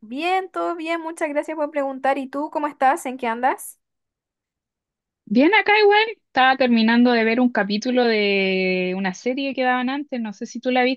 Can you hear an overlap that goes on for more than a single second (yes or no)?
no